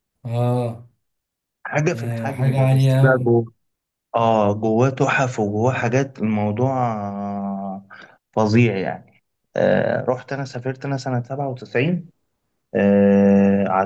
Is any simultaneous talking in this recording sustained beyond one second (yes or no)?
yes